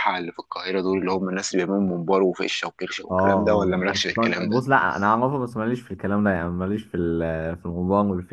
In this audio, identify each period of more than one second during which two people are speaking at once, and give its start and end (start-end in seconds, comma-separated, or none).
3.0-4.6